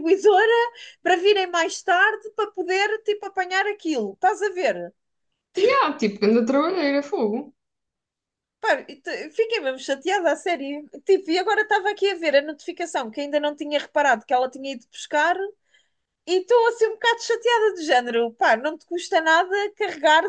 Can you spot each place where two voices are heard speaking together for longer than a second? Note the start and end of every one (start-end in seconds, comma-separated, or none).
none